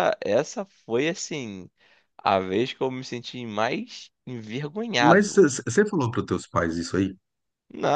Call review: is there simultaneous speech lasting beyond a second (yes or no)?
no